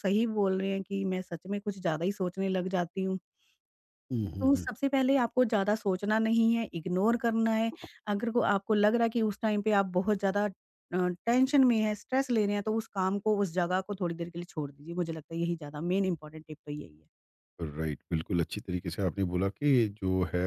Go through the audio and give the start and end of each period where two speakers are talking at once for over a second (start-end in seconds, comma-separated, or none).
none